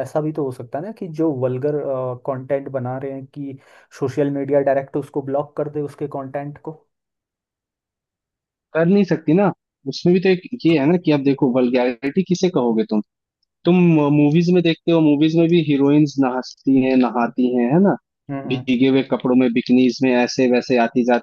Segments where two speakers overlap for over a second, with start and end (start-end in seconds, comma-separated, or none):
none